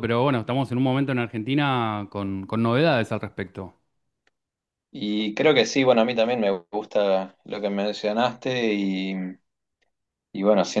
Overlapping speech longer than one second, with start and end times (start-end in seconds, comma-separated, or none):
none